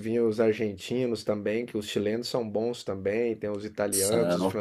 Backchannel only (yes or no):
yes